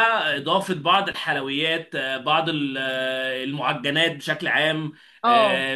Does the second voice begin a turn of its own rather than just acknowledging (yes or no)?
no